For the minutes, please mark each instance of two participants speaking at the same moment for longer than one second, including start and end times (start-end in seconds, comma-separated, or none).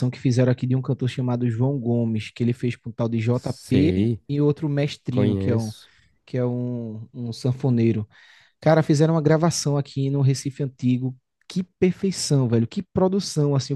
none